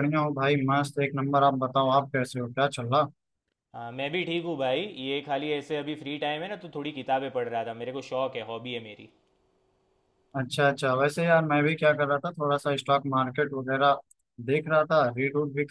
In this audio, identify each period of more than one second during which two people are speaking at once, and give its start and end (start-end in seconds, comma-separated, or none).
none